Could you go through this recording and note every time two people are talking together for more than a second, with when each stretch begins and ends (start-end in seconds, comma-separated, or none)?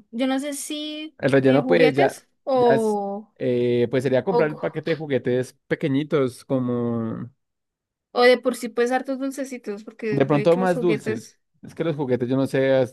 1.2-3.0, 10.1-11.4